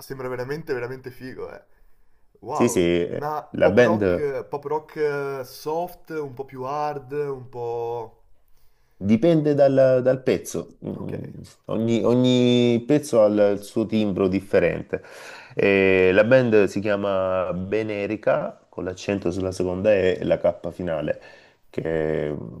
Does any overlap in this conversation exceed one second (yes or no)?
yes